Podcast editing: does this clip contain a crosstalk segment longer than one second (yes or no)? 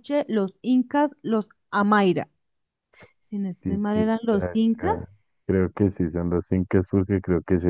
yes